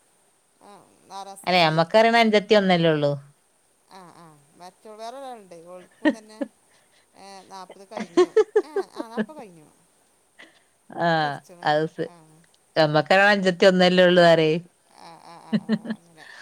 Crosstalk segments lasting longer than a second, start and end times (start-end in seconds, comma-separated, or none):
none